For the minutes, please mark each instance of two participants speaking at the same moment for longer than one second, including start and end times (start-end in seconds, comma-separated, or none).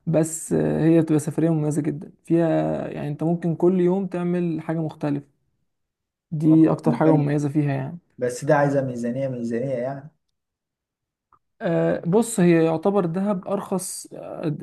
none